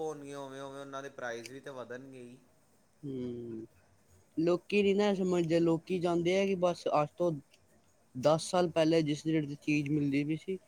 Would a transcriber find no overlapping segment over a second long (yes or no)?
yes